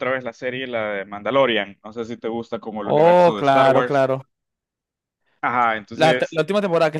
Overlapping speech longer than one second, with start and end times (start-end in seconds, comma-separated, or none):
2.8-4.1